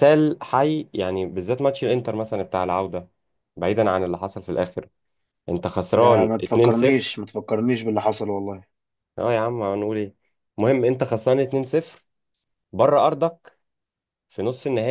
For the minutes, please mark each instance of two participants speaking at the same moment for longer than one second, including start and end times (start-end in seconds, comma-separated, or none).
5.9-7.2